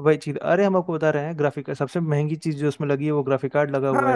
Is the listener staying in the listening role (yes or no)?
no